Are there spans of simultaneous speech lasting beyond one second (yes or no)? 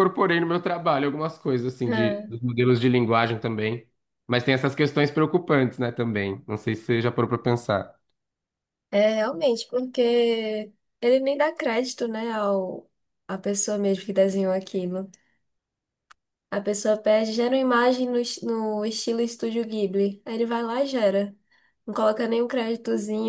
no